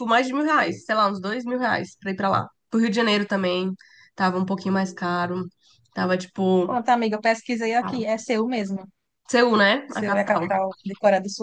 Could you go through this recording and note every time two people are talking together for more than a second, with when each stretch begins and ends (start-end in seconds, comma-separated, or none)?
none